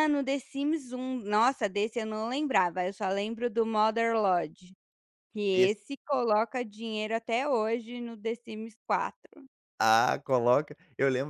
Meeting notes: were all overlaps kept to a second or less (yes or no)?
yes